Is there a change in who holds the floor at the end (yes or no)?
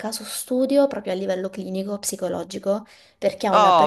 no